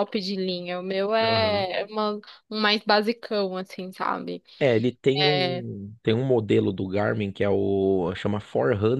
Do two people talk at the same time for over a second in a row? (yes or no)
no